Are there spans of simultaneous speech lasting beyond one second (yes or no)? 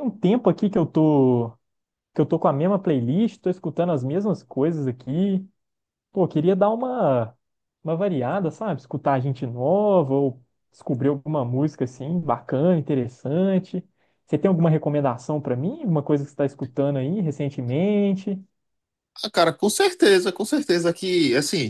no